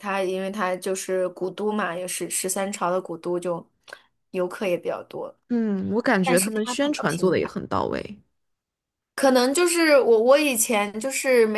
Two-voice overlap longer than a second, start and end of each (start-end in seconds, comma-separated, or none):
6.2-7.5